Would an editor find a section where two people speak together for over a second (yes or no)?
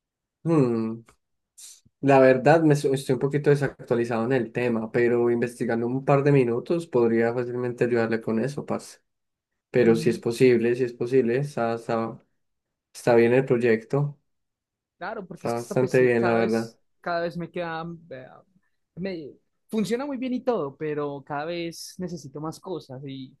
yes